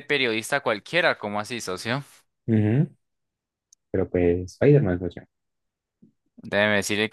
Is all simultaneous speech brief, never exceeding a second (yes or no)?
yes